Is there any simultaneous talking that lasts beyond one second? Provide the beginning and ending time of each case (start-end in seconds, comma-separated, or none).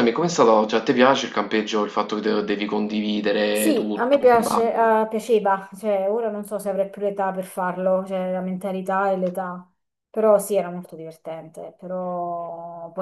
3.6-5.0